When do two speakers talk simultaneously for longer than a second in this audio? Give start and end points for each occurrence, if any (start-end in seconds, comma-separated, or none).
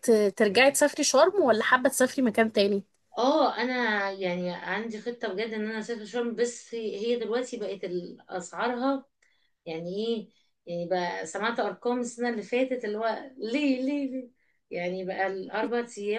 none